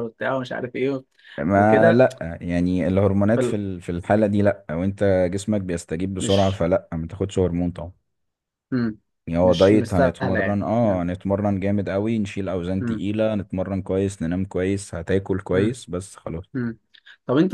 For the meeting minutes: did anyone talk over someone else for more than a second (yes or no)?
yes